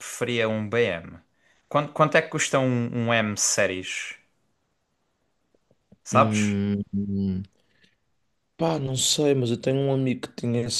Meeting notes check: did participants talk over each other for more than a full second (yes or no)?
no